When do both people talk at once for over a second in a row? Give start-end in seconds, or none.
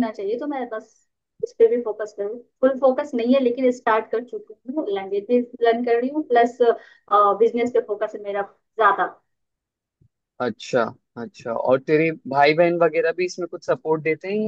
none